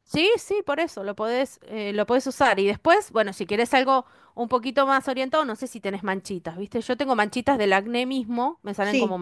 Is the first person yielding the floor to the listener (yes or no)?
yes